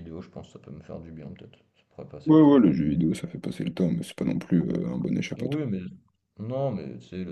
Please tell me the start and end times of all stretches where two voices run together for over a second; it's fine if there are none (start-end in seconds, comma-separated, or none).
none